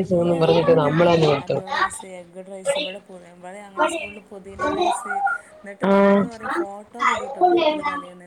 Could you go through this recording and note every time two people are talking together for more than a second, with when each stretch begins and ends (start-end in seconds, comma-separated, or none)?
none